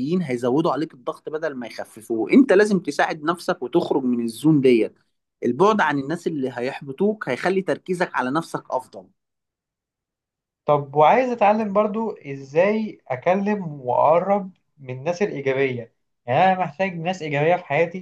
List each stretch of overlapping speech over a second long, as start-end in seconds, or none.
none